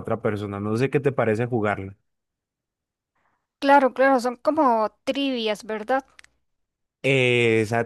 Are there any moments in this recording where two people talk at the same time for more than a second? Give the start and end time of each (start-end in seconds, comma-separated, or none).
none